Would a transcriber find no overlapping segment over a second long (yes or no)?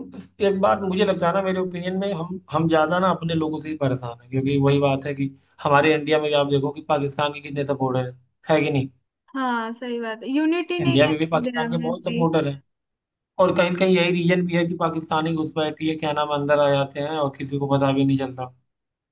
no